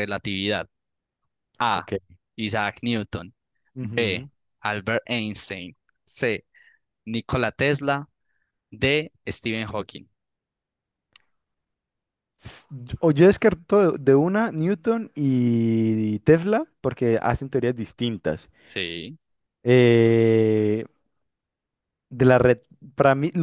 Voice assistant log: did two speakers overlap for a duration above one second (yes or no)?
no